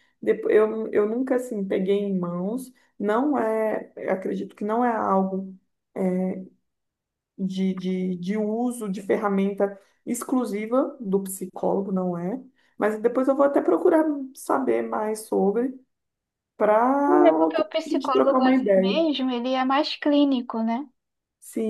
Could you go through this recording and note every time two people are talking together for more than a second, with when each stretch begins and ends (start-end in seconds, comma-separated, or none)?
17.3-19.0